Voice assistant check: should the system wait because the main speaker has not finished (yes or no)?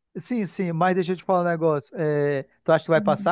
yes